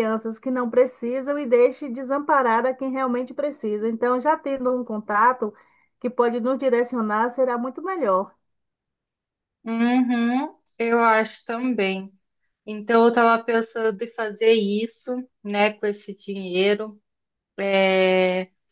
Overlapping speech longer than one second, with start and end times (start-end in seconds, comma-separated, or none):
none